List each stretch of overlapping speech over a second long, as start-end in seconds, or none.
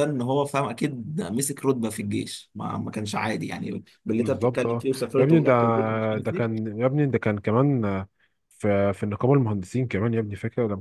4.2-5.5